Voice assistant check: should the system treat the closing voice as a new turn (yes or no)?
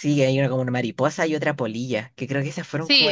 yes